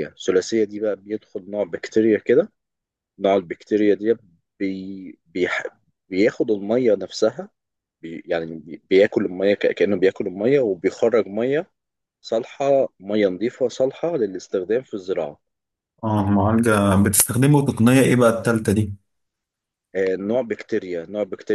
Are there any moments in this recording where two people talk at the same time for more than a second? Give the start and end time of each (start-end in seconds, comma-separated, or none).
none